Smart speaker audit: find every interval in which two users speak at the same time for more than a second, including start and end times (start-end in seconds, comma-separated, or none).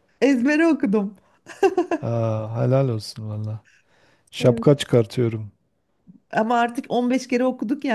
none